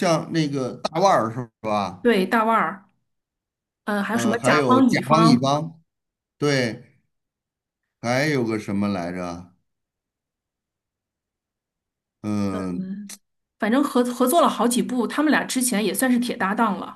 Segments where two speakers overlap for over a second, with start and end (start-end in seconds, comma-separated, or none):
4.1-5.6